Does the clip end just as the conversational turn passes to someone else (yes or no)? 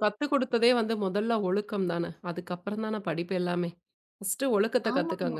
no